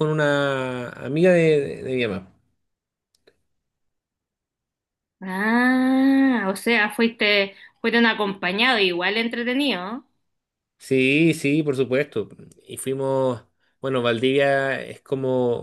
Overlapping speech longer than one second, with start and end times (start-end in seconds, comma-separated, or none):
none